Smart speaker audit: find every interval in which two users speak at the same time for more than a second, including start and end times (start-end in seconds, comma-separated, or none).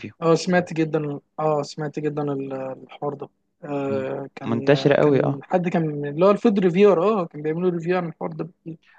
3.9-5.4